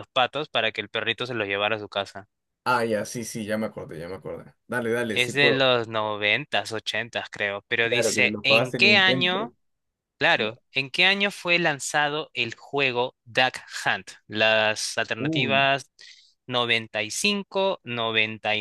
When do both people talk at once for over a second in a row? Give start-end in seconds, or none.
7.8-9.5